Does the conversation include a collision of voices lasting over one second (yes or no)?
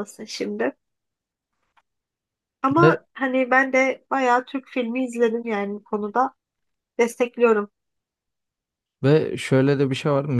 no